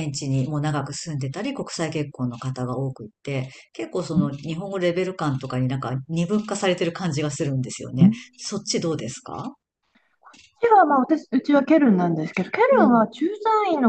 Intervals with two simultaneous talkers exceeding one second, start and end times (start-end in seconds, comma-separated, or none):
none